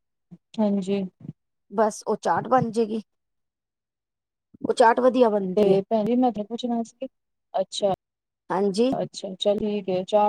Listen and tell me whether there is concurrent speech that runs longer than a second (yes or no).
no